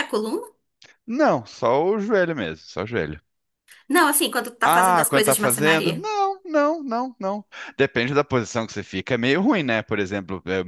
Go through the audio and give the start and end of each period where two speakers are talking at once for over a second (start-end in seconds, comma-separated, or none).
4.7-6.0